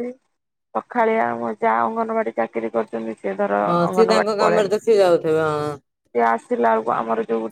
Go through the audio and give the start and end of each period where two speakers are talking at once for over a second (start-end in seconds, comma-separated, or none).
3.7-5.8